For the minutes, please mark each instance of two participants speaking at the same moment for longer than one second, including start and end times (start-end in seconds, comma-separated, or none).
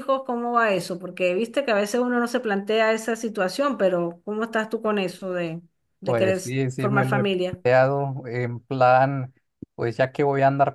6.0-7.6